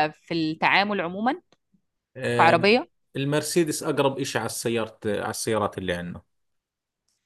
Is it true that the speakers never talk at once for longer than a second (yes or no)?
yes